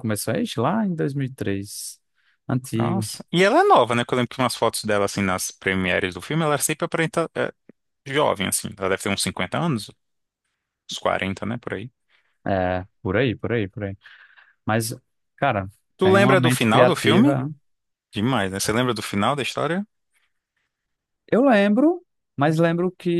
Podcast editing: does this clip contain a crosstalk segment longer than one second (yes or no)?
yes